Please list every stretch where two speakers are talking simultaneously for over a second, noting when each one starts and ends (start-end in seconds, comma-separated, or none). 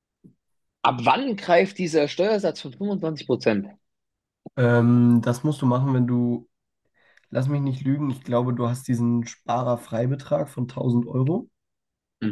none